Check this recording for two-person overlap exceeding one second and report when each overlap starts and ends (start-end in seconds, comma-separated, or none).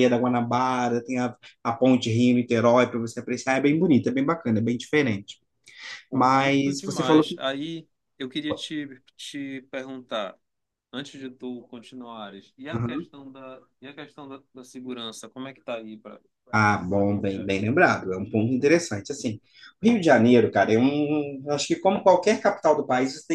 6.1-7.3